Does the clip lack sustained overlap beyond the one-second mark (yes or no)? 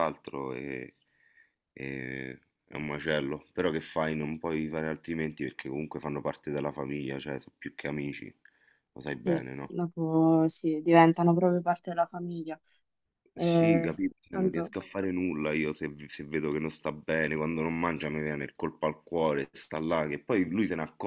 no